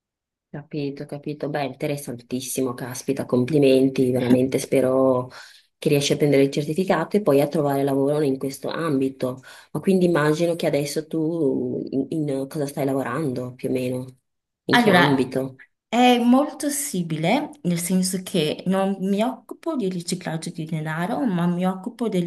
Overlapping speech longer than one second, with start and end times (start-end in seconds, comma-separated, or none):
none